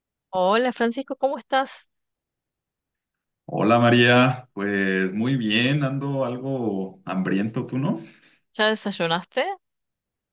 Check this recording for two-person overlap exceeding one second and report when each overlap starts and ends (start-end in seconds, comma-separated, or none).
none